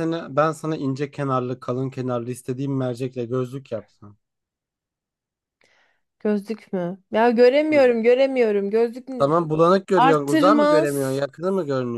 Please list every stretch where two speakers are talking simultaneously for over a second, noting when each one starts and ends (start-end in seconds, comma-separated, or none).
9.9-11.2